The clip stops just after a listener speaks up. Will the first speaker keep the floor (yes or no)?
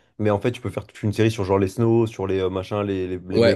no